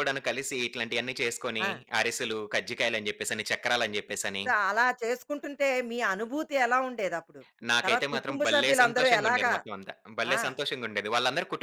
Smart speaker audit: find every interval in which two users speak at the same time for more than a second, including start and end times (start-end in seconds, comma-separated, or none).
7.8-9.5